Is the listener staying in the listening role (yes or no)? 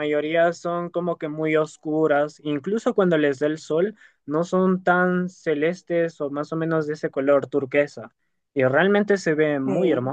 no